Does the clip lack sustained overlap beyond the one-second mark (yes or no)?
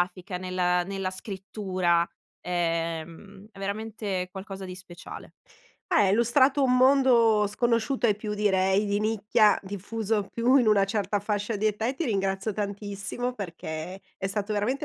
yes